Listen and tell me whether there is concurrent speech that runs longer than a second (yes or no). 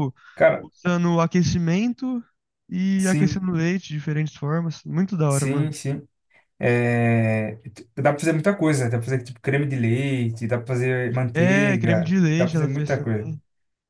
yes